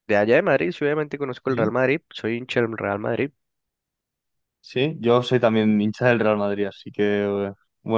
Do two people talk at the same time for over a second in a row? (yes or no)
no